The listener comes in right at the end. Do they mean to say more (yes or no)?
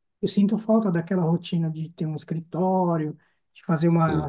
no